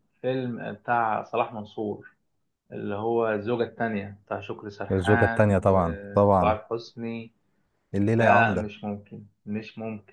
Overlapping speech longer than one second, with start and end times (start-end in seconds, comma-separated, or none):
4.9-6.5